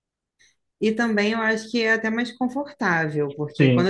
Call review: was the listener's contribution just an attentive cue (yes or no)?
yes